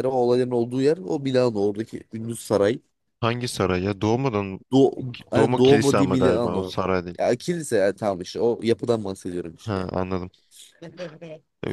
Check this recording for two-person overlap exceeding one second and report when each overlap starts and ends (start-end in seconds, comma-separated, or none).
5.3-6.7